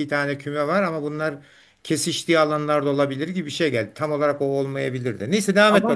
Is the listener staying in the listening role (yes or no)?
no